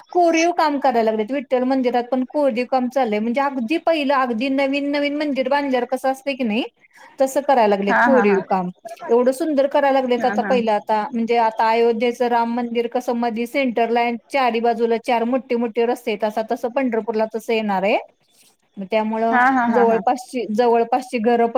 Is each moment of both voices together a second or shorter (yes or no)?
yes